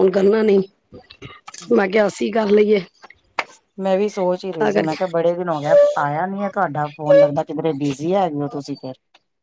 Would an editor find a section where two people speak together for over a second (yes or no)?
no